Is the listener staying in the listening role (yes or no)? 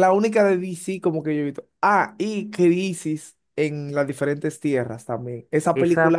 no